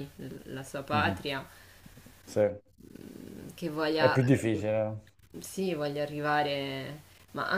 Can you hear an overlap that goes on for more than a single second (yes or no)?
no